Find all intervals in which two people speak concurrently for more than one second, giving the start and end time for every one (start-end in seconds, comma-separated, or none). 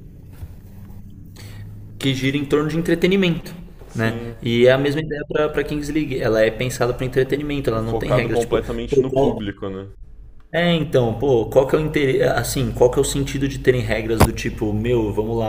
7.7-9.4